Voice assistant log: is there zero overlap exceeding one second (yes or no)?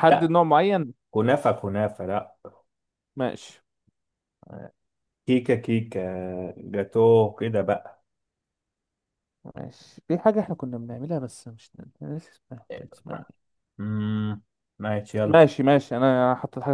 yes